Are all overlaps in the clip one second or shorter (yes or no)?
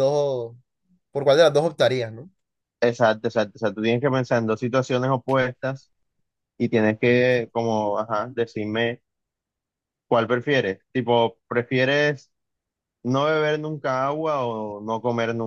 yes